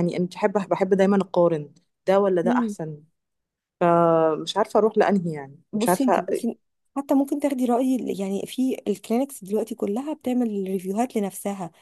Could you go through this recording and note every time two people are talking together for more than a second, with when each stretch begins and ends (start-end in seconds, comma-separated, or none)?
none